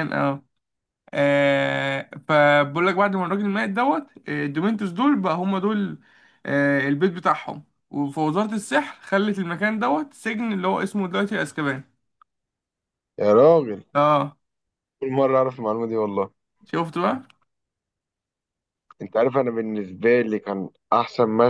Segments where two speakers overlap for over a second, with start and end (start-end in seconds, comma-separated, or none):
none